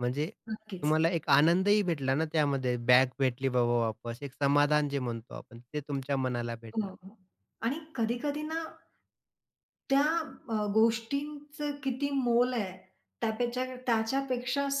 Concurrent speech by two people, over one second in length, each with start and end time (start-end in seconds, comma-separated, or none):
none